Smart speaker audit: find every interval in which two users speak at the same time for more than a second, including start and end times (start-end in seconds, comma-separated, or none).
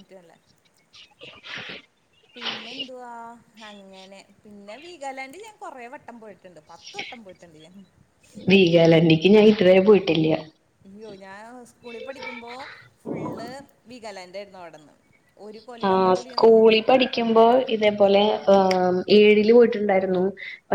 none